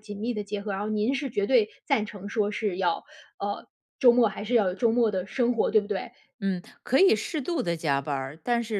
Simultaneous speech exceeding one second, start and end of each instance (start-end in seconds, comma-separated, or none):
none